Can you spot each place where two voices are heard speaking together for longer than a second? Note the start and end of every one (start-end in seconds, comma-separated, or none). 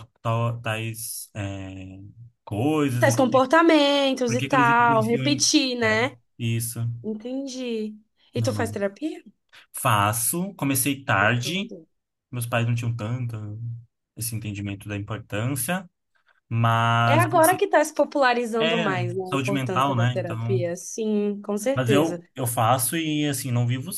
4.3-6.0, 18.6-20.7